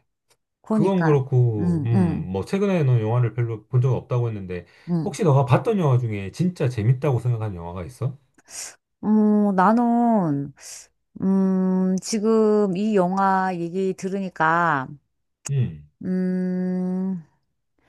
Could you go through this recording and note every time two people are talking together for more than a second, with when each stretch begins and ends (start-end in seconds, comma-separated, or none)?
0.7-2.3